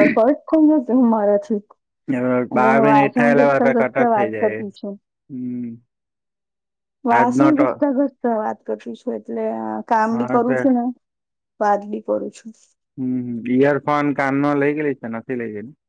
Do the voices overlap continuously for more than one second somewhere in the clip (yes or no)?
yes